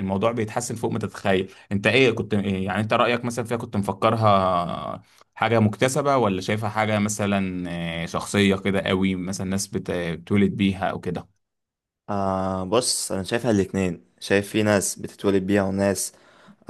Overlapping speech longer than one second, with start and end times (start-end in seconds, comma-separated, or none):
none